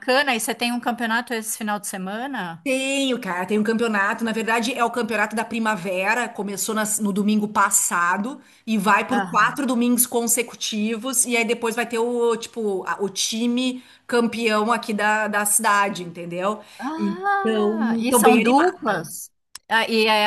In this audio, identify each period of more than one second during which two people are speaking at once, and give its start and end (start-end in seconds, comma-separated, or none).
16.8-19.0